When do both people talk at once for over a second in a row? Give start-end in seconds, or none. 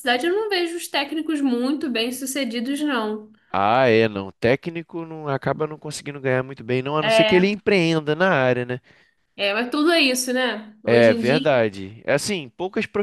none